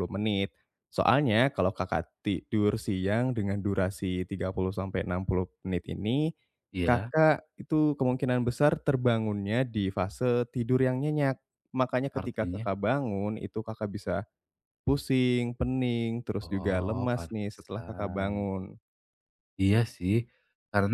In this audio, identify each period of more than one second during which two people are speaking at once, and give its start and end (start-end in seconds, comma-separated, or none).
16.4-18.5